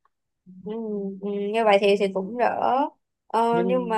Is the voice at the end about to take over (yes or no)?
no